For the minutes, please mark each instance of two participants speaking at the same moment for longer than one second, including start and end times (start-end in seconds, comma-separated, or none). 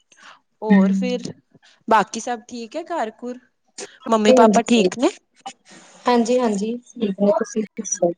none